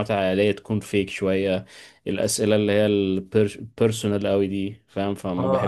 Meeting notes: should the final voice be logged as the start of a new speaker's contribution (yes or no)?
yes